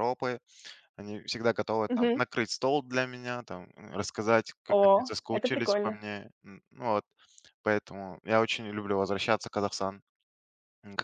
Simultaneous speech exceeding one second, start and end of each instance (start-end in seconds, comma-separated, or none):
4.7-6.0